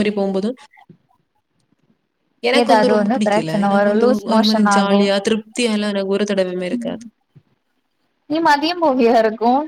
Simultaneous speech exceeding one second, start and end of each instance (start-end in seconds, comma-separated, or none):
2.6-5.0